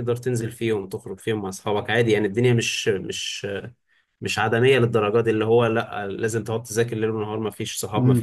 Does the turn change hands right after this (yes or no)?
yes